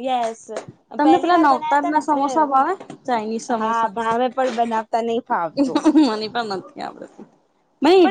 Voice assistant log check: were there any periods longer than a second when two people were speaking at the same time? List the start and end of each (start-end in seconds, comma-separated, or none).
1.0-2.5